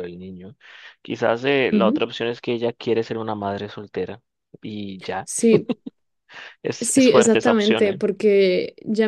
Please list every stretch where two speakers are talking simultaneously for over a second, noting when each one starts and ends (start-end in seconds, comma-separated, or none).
6.8-8.0